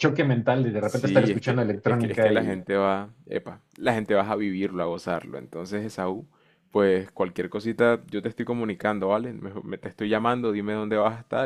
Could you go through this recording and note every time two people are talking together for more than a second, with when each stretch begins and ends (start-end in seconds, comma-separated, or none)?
0.8-2.6